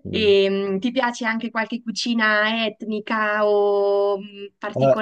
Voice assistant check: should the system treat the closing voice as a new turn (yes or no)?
yes